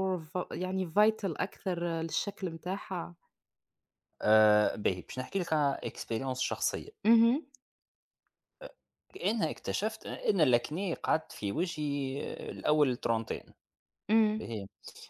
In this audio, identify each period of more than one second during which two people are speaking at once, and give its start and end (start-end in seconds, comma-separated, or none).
none